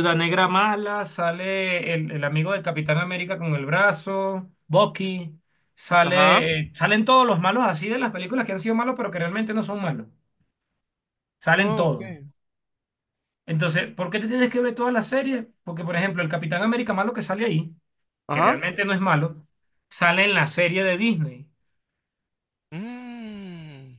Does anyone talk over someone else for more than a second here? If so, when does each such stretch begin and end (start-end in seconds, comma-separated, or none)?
none